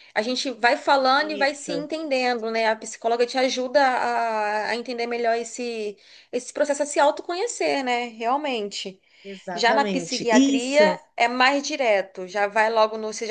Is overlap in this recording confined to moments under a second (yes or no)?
no